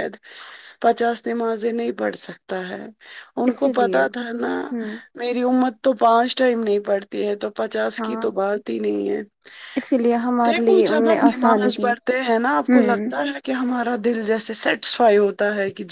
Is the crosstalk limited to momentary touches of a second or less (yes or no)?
no